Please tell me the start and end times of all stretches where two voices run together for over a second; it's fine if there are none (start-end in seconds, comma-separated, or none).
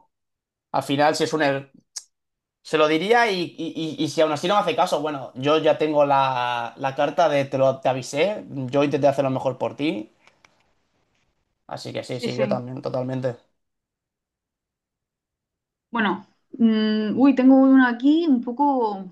none